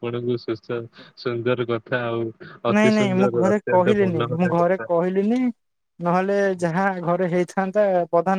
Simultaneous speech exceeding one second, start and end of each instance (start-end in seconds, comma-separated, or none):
2.8-4.8